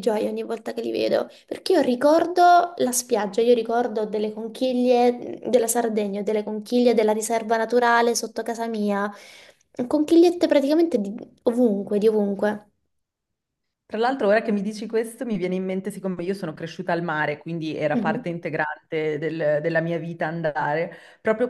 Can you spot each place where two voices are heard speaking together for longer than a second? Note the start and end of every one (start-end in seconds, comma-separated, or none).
none